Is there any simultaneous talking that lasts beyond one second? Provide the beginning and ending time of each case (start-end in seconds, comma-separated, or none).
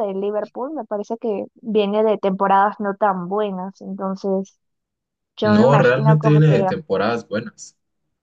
5.4-6.7